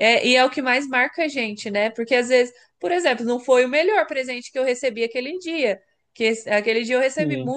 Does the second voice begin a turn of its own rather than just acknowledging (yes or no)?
no